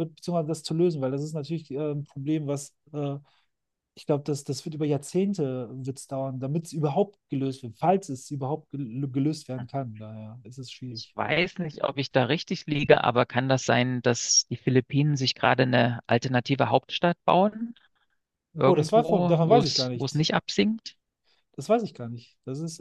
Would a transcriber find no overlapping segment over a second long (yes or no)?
no